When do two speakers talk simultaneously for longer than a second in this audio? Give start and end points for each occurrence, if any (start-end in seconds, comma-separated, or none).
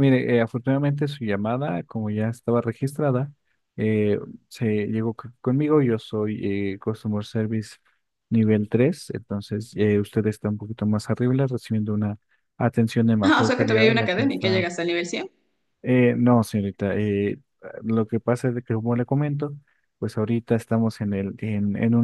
13.2-14.6